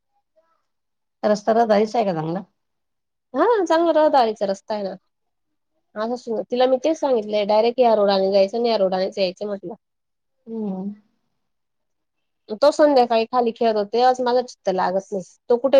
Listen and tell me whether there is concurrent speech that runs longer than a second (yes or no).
no